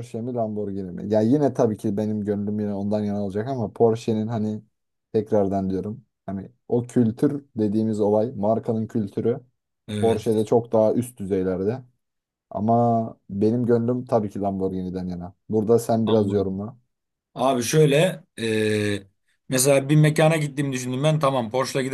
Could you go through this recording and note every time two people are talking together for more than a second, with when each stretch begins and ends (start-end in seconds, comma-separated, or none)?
none